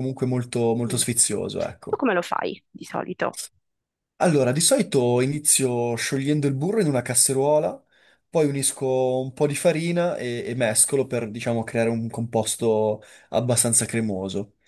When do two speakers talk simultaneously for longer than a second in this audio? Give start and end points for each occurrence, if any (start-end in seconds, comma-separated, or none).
none